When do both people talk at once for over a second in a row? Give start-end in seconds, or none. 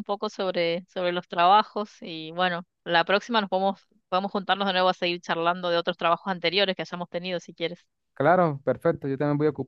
none